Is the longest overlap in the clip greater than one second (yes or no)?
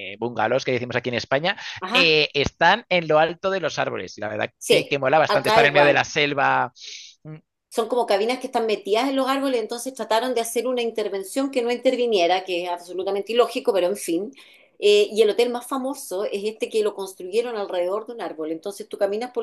yes